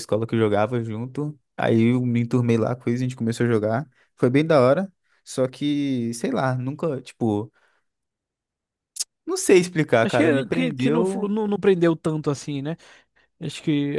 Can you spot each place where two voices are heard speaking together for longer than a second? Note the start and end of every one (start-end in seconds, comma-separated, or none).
10.0-11.3